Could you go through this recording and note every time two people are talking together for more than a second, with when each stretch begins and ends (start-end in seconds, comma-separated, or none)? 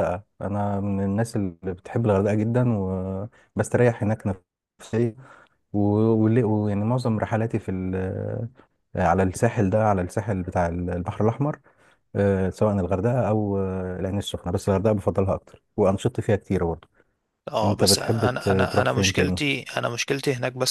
17.6-19.4